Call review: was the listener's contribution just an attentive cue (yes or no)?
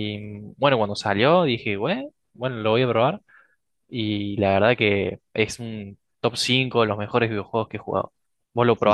no